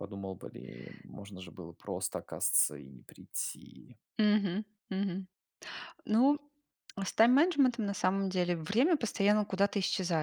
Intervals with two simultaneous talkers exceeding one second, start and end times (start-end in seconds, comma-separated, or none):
none